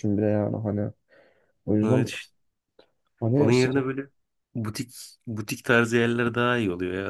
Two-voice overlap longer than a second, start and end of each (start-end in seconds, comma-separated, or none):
none